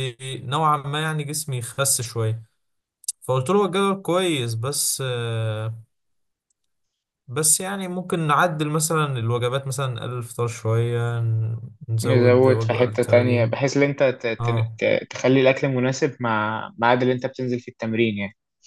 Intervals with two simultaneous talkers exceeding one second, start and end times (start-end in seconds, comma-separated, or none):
12.0-13.6